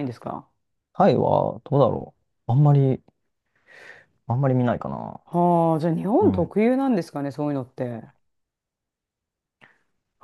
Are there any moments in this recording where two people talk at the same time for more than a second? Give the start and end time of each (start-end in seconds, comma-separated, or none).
none